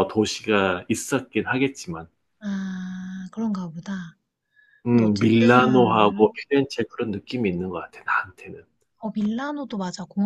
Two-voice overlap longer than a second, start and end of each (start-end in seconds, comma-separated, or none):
4.9-6.3